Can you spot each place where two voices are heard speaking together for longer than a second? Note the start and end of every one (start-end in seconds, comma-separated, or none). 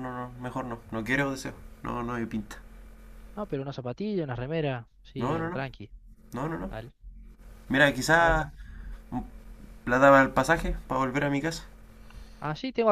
none